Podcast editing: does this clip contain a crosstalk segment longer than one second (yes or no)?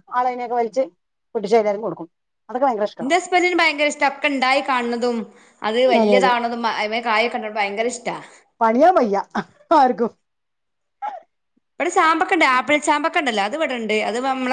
no